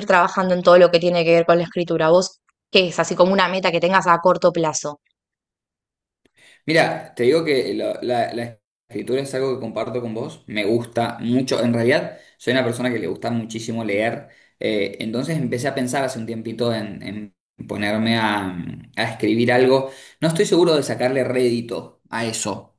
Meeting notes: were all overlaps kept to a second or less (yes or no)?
yes